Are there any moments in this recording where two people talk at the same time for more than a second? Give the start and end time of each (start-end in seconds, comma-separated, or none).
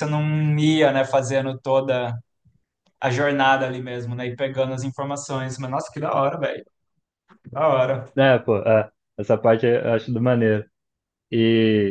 none